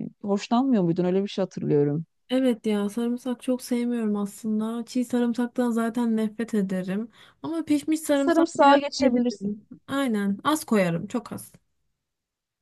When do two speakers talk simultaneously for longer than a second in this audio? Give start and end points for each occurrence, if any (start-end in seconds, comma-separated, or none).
8.1-9.5